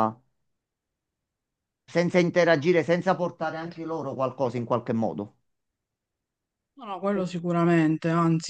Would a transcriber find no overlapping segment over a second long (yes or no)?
yes